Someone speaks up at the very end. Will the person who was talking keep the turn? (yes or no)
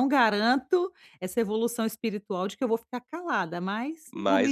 no